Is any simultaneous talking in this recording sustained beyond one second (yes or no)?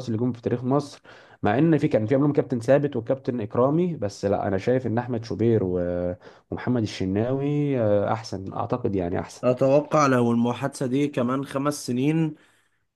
no